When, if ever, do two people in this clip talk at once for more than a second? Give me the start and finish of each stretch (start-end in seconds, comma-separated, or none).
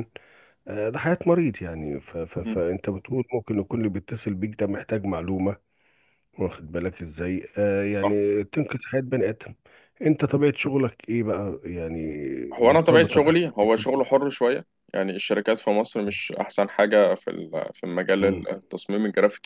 12.6-14.1